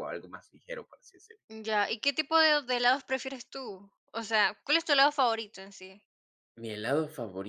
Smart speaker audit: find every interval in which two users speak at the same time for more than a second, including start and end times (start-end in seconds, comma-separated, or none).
none